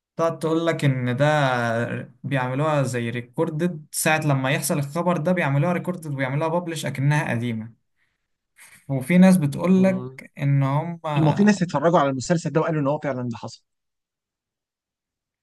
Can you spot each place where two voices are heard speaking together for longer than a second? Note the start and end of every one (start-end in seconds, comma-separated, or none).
none